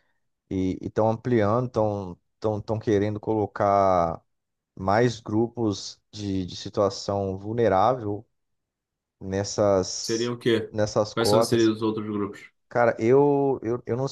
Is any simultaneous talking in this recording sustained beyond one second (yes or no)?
no